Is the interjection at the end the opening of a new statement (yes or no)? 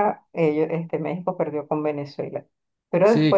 no